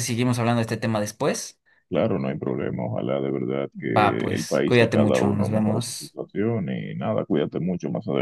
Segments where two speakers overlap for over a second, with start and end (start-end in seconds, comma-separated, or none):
3.7-6.2